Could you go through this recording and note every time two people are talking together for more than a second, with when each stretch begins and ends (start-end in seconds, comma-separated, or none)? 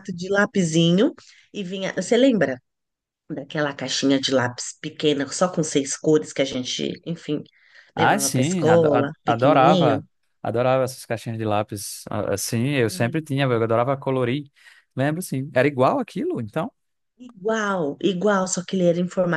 8.0-10.0